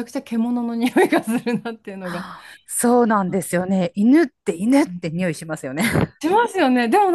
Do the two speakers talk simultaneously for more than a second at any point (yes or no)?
no